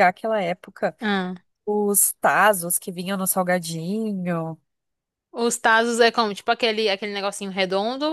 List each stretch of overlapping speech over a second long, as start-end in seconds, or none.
none